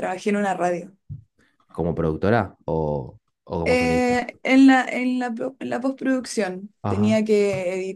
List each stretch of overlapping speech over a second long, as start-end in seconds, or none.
none